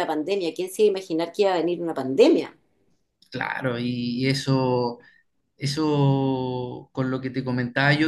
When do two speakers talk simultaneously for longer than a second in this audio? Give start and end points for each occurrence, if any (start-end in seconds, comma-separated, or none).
none